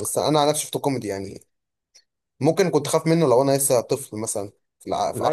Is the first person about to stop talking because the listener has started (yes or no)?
yes